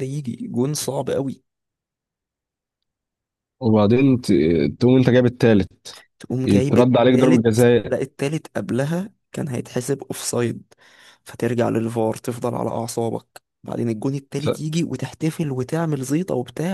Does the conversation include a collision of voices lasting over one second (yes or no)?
yes